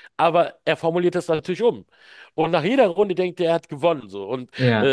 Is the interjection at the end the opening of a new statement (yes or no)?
no